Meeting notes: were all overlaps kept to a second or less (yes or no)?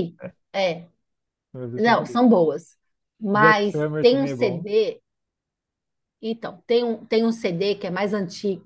no